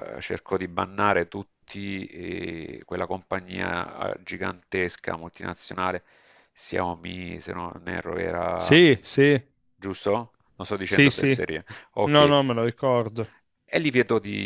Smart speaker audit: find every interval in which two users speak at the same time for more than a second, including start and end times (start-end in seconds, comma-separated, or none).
none